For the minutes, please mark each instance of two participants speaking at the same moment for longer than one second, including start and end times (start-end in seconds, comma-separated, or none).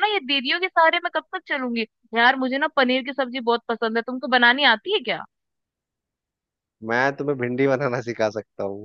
none